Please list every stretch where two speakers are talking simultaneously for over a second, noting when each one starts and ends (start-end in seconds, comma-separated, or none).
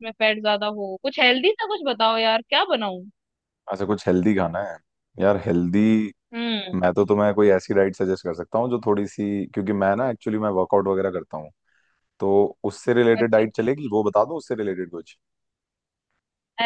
none